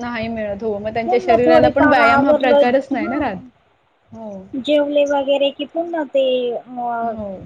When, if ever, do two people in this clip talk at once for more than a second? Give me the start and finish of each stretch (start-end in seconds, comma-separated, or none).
1.0-3.2